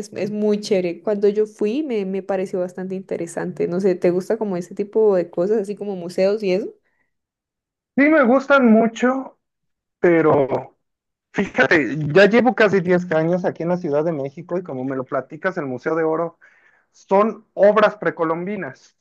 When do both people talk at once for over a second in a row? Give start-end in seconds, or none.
none